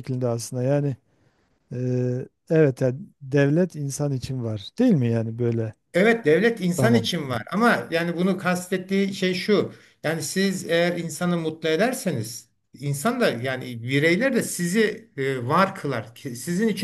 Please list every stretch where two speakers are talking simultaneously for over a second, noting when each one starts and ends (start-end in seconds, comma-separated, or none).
none